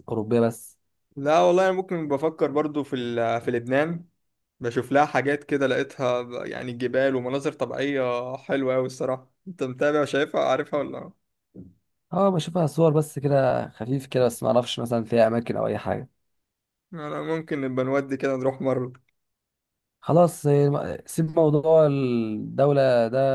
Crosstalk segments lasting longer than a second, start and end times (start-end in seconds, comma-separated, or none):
none